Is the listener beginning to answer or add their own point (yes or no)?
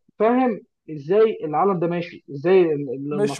yes